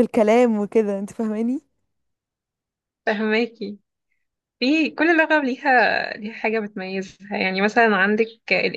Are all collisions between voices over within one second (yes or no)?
yes